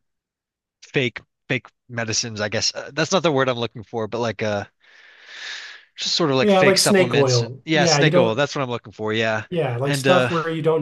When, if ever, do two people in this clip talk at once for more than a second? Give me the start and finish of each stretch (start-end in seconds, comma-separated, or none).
6.4-8.4